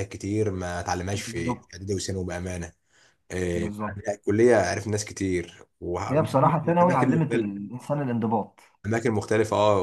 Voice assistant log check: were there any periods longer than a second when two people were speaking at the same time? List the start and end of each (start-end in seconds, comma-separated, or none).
6.1-7.5